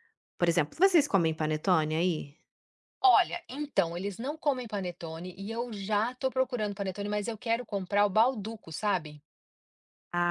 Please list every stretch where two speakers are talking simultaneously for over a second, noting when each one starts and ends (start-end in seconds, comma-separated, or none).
none